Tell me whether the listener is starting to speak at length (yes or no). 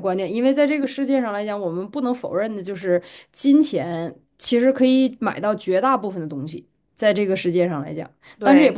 no